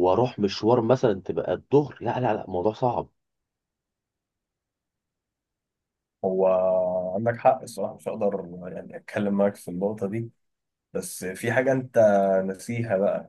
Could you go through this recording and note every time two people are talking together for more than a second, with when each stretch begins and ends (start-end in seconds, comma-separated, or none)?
none